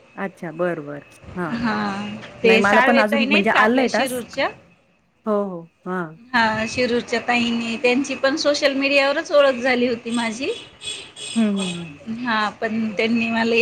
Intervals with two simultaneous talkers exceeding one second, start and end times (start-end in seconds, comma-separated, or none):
2.5-4.4